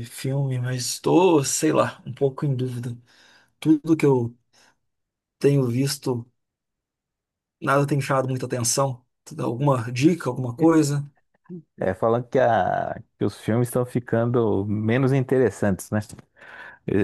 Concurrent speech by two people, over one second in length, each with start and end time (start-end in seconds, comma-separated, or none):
none